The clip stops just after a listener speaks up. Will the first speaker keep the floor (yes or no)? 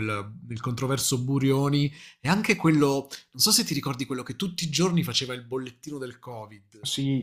no